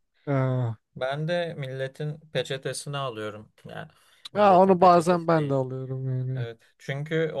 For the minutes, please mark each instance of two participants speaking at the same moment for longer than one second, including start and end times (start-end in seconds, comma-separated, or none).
4.3-5.6